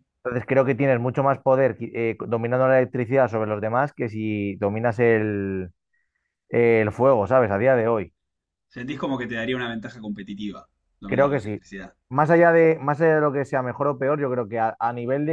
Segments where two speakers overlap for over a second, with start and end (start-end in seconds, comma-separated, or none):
none